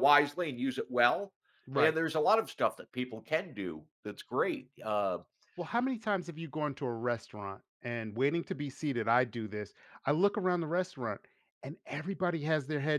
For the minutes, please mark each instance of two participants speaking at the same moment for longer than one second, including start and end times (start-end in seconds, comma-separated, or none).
none